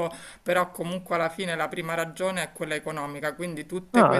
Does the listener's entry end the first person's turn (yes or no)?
no